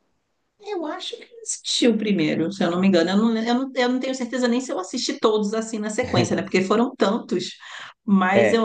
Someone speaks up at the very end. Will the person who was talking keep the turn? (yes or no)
no